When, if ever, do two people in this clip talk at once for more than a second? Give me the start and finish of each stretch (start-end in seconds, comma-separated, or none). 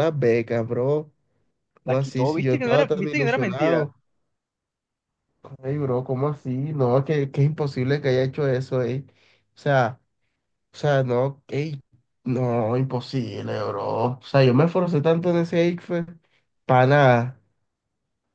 1.8-3.9